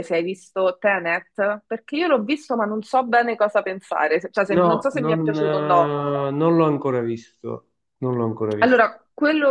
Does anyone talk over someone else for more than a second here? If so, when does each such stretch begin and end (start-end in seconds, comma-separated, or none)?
4.5-6.0